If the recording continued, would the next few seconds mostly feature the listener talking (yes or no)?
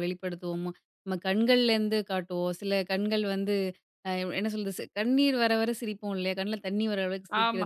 no